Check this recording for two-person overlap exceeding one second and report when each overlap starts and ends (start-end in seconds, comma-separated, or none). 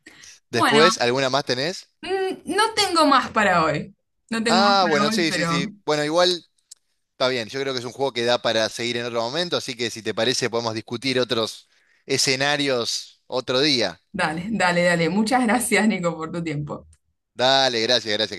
4.5-5.7